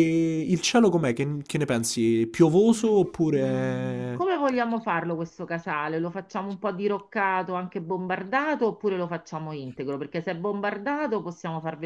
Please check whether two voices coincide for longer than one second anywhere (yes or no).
yes